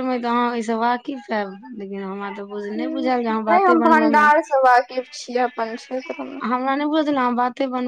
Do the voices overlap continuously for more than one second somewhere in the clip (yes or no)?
yes